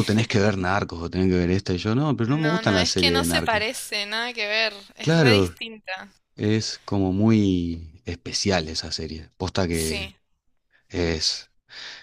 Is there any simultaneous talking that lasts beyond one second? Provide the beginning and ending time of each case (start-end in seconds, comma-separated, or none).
2.3-3.6